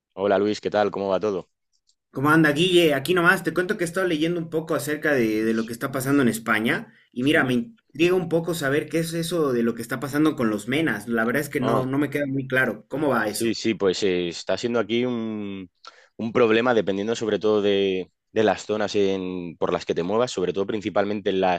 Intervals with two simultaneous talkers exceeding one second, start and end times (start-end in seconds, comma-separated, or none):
none